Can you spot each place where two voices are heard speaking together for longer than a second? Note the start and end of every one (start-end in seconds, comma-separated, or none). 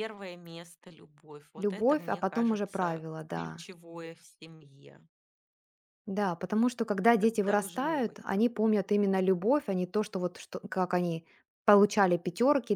1.6-3.6, 7.0-8.4